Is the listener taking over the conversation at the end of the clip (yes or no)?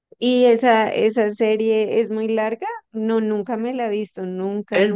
yes